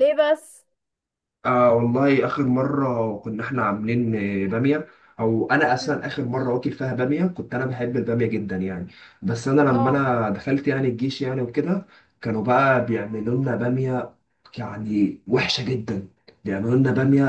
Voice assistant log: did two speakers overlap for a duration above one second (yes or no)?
no